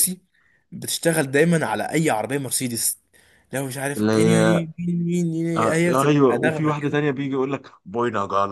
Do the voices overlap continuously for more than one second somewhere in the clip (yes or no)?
yes